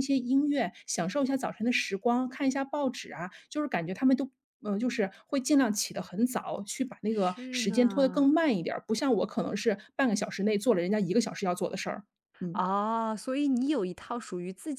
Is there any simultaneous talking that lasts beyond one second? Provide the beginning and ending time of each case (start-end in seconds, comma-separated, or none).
7.1-8.3